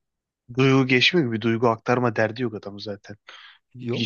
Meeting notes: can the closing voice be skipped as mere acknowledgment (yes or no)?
yes